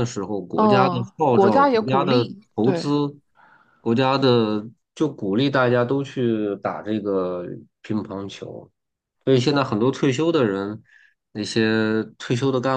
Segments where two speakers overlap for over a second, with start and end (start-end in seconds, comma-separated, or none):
0.6-2.9